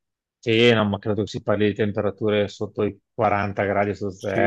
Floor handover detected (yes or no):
yes